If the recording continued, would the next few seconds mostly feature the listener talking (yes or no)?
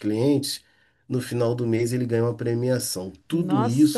yes